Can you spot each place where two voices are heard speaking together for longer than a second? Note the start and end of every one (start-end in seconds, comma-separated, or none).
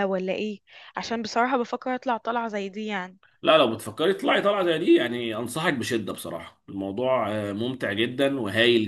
none